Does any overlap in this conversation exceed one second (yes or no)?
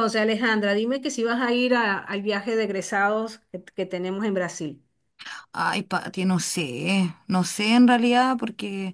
no